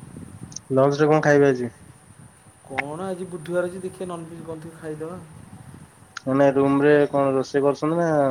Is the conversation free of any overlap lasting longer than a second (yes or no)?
yes